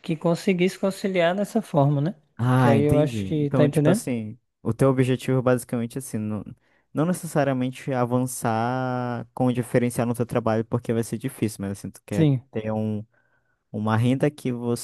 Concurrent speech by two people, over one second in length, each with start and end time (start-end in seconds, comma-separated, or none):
2.6-4.0